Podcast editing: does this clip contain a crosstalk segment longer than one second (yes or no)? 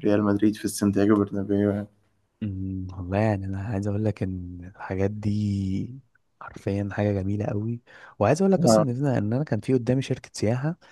no